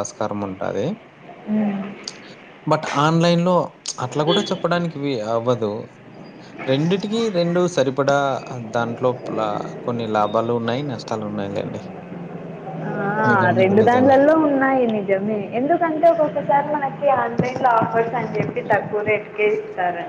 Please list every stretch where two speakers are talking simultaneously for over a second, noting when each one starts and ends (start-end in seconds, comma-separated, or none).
none